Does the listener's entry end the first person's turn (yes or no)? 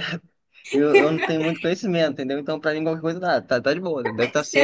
yes